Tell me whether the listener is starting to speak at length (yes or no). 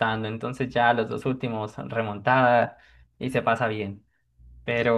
no